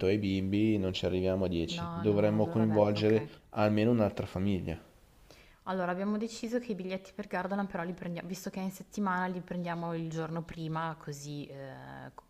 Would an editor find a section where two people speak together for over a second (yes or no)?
yes